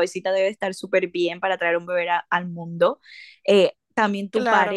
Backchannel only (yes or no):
yes